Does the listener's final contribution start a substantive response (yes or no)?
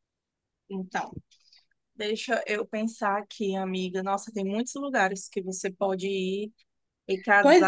yes